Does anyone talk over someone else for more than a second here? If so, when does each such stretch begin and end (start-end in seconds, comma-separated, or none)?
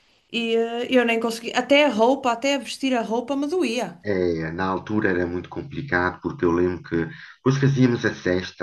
none